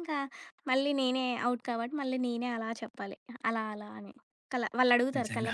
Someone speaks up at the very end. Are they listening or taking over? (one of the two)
listening